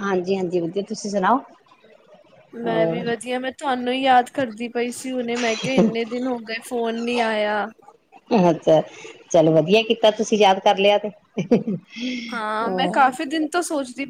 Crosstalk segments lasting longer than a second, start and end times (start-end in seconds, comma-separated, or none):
none